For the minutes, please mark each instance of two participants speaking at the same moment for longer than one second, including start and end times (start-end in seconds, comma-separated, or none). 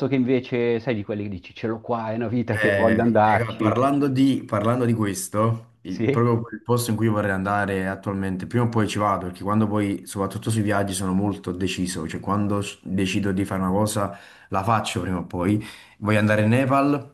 2.5-3.8